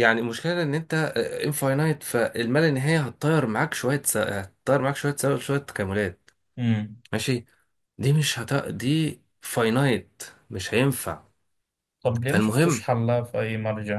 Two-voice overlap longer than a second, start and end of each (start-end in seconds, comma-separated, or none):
none